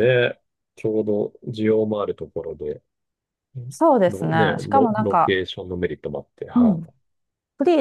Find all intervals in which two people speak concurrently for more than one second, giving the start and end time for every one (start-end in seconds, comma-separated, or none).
4.1-5.3